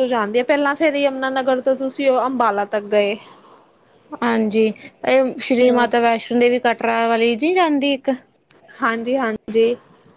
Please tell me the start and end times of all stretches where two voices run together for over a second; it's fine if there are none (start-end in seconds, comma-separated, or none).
none